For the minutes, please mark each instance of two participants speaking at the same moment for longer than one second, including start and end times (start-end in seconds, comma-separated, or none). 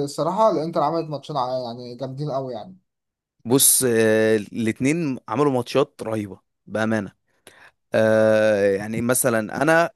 none